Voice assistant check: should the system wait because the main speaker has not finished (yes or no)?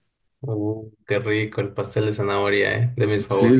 no